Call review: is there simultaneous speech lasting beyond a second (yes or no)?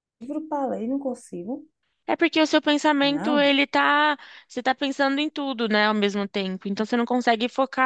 no